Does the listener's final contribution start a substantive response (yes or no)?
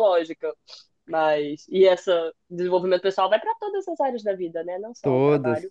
no